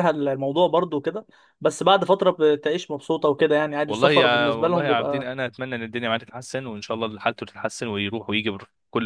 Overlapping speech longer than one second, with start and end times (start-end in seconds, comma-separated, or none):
3.9-5.3